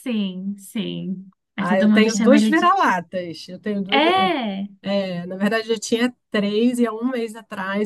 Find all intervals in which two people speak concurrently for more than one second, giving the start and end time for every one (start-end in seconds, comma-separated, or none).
1.6-2.8